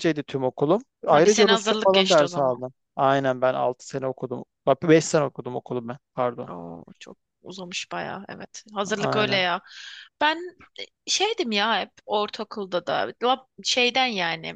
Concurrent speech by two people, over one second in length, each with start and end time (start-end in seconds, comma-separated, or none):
1.1-2.6